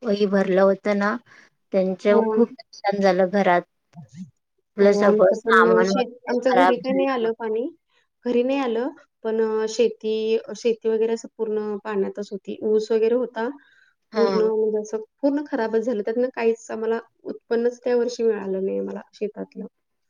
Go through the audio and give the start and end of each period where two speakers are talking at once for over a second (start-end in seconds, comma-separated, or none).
4.8-7.3